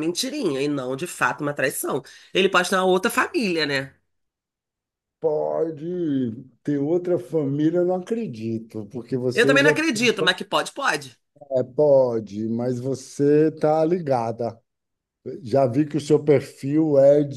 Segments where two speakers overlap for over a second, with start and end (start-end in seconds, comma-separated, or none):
none